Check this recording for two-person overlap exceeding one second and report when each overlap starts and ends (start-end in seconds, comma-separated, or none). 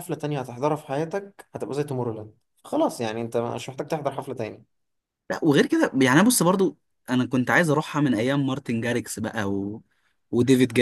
none